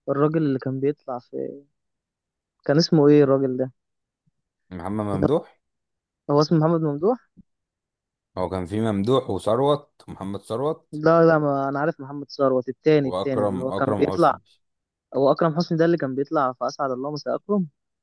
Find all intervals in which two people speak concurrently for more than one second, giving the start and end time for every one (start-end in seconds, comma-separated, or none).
13.0-14.4